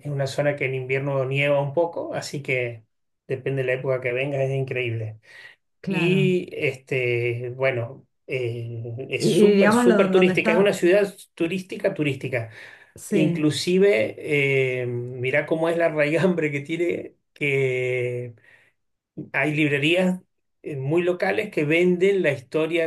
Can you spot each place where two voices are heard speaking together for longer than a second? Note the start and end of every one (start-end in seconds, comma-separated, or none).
9.2-10.8